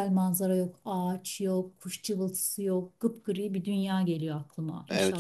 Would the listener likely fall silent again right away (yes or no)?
no